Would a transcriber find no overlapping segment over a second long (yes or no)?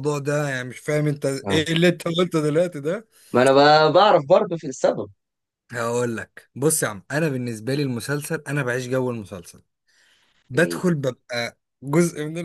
yes